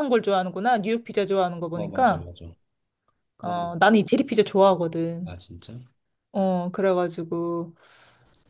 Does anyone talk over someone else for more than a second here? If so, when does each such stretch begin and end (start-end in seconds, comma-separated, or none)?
none